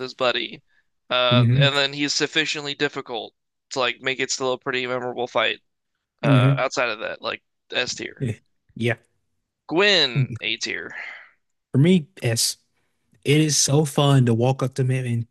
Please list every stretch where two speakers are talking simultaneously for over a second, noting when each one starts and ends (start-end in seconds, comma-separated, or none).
none